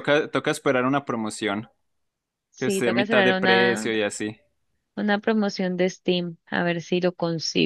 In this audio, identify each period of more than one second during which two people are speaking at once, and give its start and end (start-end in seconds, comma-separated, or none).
2.6-3.9